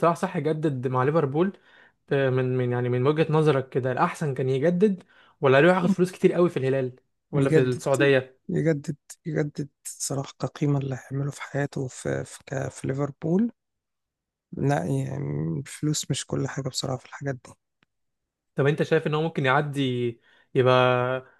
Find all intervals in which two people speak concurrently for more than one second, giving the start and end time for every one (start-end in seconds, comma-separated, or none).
none